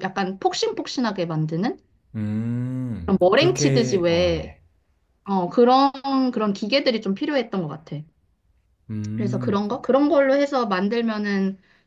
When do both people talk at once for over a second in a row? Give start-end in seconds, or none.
3.0-4.5